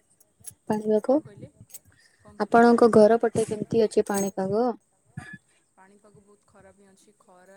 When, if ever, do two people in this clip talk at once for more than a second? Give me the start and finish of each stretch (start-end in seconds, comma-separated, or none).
none